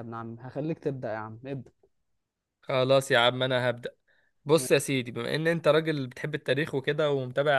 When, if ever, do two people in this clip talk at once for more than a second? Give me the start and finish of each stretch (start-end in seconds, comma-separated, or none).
none